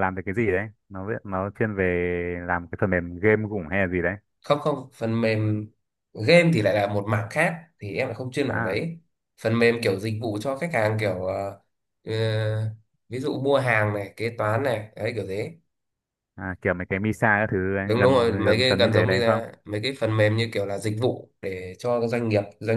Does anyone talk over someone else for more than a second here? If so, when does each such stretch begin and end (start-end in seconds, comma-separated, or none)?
17.9-19.4